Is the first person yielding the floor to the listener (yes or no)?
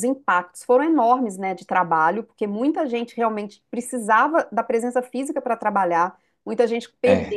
no